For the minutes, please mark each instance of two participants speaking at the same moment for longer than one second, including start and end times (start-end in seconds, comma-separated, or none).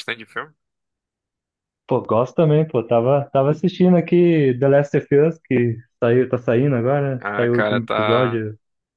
7.2-8.4